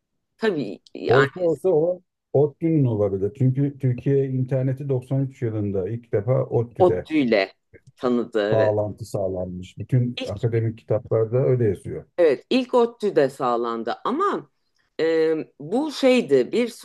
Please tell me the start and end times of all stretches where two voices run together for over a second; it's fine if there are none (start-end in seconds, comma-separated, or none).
none